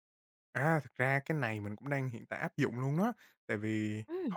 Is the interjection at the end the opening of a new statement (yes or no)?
no